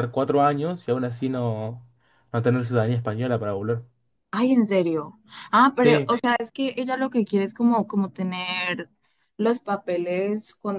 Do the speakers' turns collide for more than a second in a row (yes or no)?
no